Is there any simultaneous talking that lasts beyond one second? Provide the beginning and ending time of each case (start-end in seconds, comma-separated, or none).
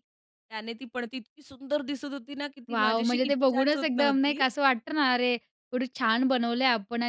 2.7-4.4